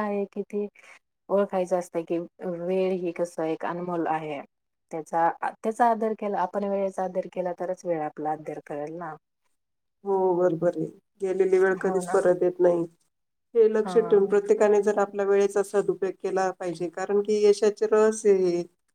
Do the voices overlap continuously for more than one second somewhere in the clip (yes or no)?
no